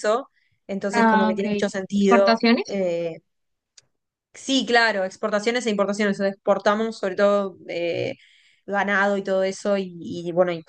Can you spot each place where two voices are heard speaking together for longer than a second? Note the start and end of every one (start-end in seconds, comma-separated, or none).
0.9-2.8